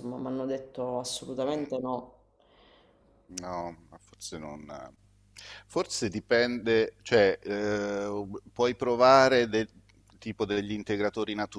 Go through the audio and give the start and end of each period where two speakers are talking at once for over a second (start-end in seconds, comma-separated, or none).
none